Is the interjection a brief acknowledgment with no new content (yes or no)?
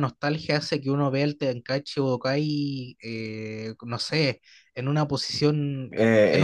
no